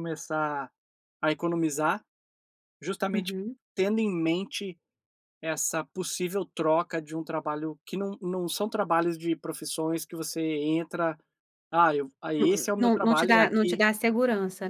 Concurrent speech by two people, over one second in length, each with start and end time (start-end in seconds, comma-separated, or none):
12.4-13.8